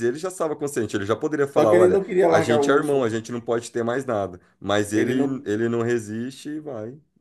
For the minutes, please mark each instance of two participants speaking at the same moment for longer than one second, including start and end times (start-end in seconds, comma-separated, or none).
1.5-3.1